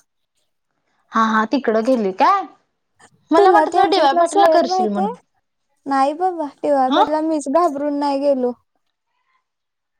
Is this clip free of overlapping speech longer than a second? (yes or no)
no